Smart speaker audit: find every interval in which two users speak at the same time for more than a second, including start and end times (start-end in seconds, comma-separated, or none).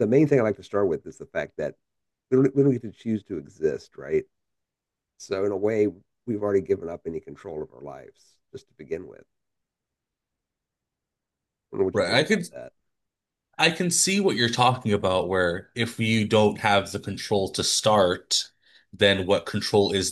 none